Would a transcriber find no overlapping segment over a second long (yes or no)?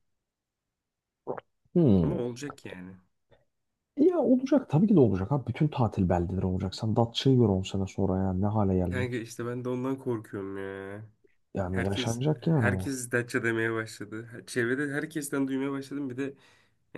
no